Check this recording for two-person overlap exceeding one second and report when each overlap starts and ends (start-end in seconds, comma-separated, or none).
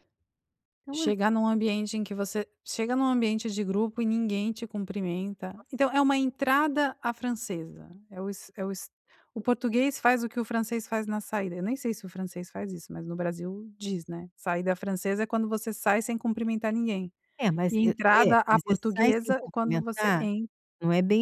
17.7-20.3